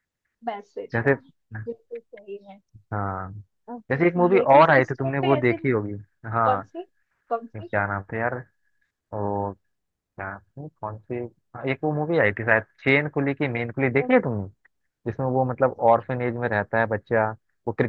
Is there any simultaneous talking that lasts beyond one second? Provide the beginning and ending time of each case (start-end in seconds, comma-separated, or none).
3.9-5.6